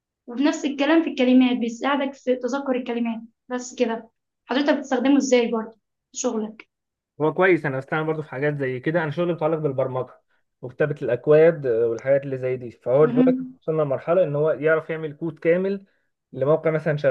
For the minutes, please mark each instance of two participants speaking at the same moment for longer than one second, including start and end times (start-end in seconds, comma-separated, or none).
none